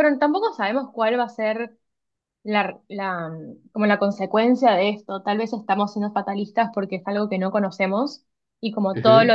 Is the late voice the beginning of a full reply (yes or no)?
no